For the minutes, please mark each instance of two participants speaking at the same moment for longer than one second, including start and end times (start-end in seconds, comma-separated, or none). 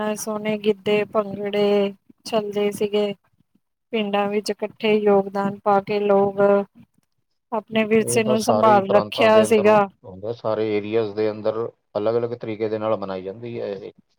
8.1-9.8